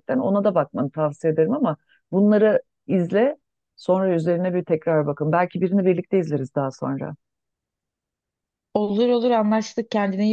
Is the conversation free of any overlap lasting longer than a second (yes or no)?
yes